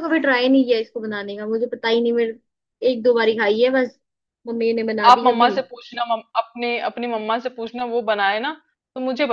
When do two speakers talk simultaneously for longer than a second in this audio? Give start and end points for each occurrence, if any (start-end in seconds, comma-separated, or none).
none